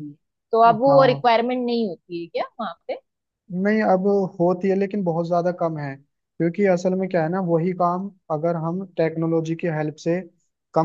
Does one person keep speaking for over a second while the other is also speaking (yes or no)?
no